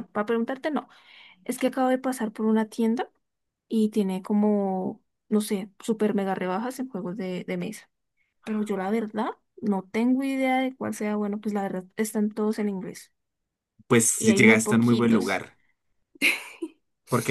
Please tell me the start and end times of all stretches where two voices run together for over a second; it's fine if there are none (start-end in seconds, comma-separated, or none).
14.2-15.4